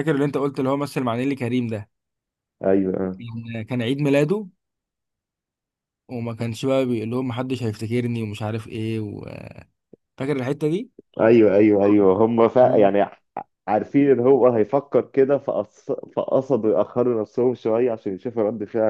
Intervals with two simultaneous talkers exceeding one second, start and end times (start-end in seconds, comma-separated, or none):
none